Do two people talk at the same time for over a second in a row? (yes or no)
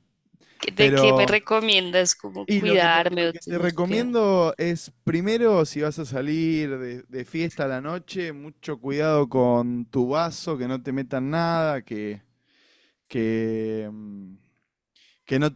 yes